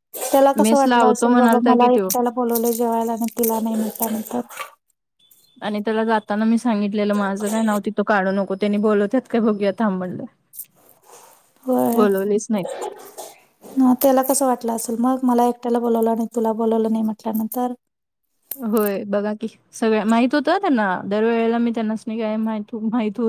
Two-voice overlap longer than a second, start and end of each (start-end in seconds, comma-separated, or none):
0.6-2.1